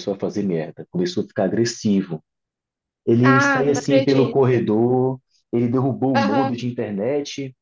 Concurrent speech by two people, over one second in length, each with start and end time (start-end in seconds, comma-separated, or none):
3.2-4.6